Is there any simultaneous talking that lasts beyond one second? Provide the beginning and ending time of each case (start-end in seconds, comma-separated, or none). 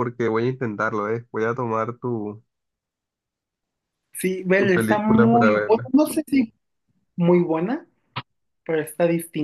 4.6-5.9